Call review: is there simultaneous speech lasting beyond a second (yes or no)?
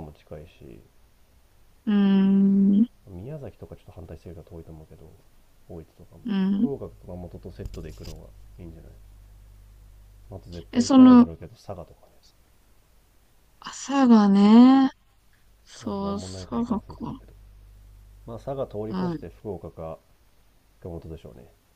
yes